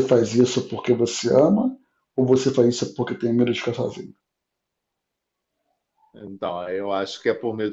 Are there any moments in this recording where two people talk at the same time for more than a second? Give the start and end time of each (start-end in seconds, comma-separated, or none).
none